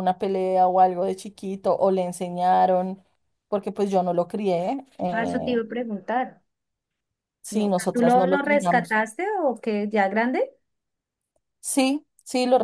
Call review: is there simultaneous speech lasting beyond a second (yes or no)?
yes